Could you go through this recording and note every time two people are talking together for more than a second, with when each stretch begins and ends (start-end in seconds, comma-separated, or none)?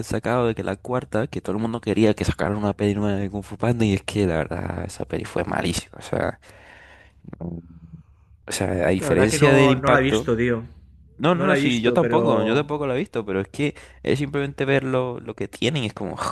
9.0-10.3, 11.3-12.7